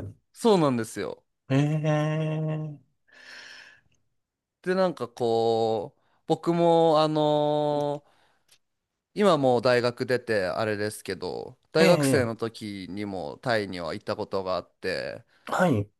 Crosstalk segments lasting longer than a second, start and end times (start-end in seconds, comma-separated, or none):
none